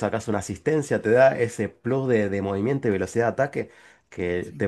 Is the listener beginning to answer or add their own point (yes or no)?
no